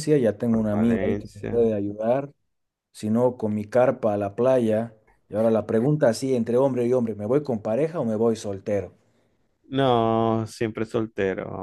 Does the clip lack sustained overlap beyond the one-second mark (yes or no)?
no